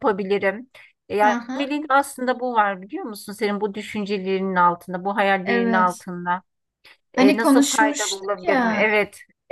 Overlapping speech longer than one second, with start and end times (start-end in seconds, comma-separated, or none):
7.2-8.9